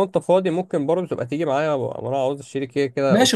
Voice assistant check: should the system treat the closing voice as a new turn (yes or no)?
yes